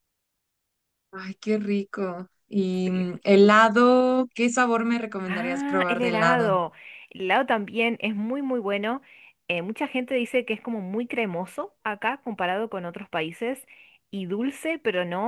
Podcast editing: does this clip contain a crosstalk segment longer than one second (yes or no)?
yes